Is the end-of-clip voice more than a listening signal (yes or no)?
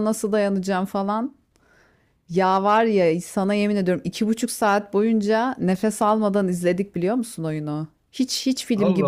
no